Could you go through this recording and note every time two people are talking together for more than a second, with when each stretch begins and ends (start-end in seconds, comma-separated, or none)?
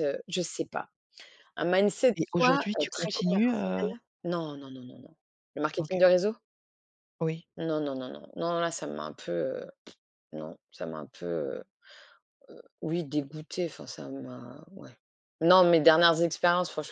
2.2-3.9